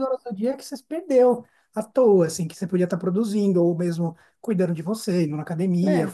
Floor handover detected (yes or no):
no